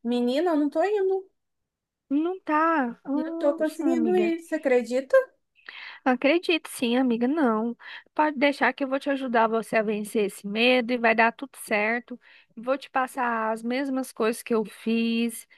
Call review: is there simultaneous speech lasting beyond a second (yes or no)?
yes